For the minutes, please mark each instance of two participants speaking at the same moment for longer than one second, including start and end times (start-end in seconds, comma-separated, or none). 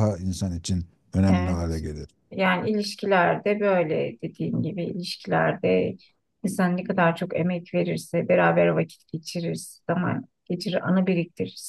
none